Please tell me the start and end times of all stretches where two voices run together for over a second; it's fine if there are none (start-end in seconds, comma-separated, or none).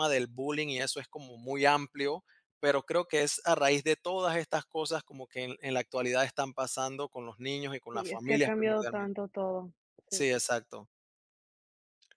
7.9-9.2